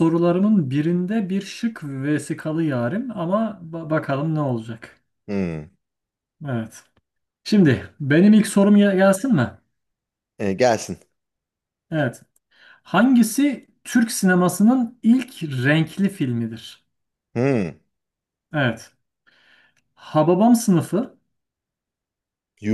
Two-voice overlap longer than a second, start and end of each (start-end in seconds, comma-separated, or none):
none